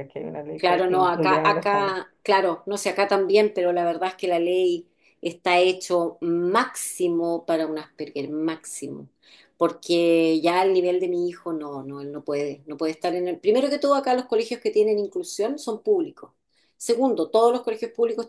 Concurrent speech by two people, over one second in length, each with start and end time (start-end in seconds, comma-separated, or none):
0.6-2.0